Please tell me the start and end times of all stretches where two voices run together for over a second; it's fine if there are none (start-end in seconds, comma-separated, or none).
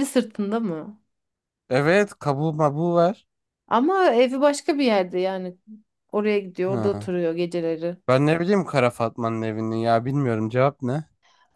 none